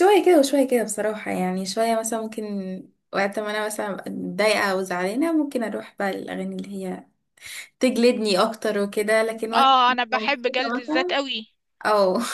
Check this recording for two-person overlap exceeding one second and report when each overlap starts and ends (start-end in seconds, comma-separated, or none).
9.5-11.2